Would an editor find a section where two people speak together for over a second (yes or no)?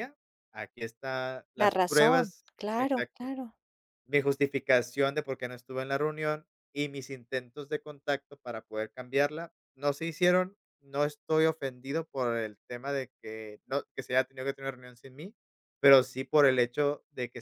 yes